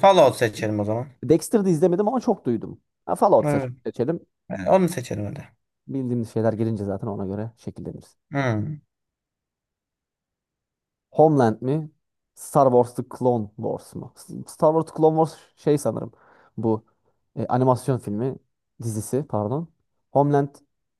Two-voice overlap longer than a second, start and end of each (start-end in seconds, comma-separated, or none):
none